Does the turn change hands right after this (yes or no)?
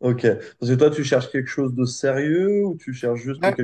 no